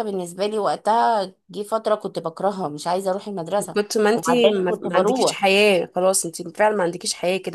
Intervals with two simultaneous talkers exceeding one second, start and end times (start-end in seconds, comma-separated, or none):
3.7-5.4